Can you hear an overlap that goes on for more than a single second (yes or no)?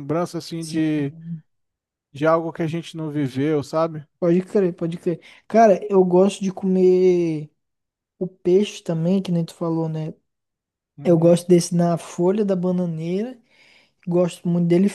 no